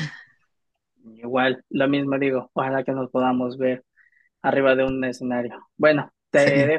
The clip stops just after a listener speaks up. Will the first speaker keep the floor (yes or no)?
yes